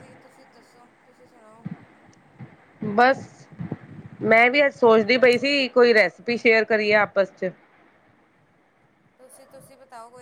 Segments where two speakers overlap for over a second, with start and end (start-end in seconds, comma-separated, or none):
none